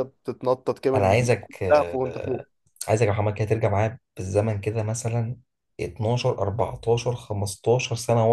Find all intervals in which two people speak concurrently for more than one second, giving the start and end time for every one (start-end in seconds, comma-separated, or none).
0.9-2.4